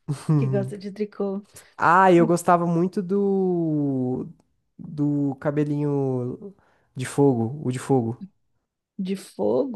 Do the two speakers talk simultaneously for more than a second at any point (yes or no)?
no